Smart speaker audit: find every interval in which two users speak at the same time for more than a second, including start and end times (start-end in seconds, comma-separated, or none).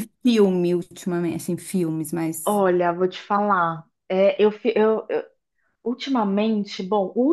none